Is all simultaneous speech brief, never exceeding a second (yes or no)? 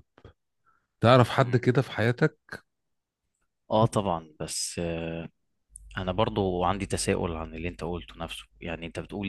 yes